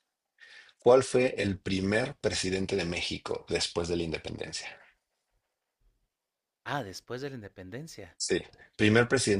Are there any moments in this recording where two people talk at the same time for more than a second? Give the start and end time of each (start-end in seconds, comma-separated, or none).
none